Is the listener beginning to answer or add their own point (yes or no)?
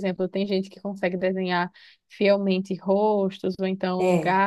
no